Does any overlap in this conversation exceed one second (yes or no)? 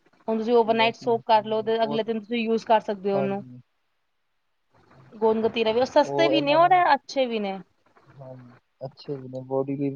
yes